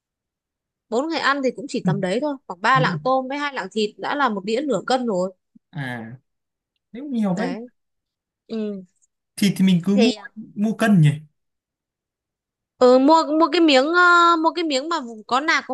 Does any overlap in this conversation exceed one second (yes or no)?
no